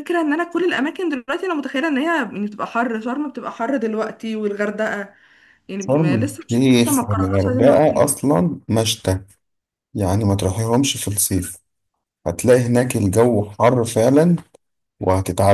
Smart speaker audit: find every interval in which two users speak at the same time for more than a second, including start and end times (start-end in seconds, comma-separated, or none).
5.8-8.2